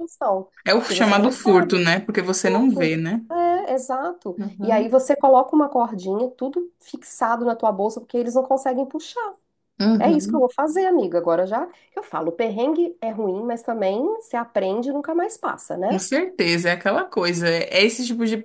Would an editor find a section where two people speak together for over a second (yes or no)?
yes